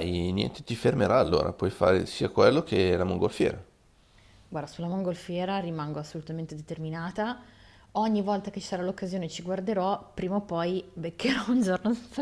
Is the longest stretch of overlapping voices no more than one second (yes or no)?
yes